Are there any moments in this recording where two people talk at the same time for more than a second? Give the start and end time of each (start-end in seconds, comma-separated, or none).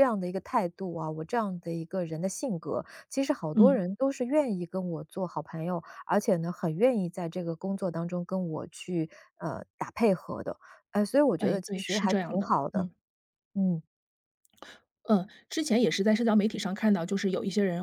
11.4-12.9